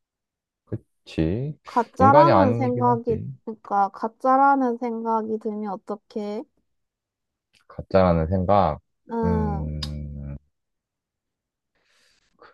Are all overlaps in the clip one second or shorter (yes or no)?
no